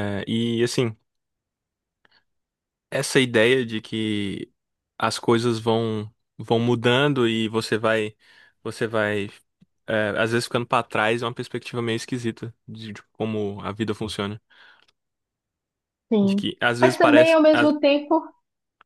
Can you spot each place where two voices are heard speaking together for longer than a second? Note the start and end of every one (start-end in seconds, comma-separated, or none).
16.2-17.7